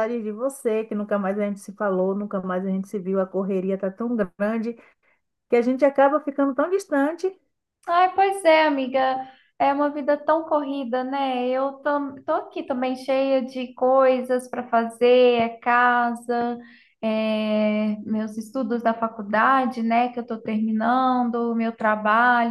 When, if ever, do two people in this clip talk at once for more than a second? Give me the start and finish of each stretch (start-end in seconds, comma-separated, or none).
none